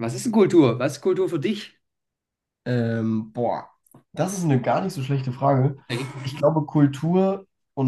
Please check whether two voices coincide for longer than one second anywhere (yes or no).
no